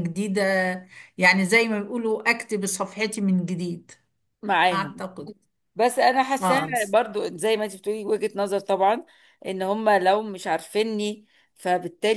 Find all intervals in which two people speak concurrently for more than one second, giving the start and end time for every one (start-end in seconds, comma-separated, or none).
none